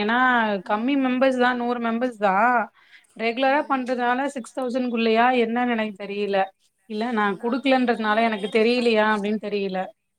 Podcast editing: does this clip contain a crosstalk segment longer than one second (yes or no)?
yes